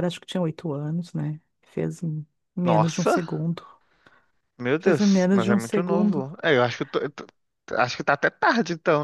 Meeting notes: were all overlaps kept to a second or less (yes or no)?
no